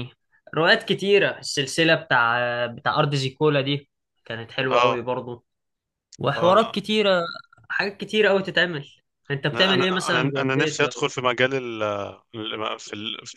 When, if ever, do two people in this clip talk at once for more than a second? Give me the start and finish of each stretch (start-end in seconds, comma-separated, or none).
9.5-11.1